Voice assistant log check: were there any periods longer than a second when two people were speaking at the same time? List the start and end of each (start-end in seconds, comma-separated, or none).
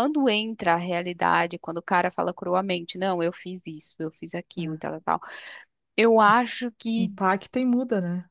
none